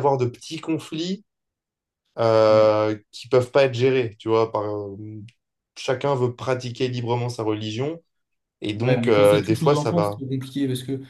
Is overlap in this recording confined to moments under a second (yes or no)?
no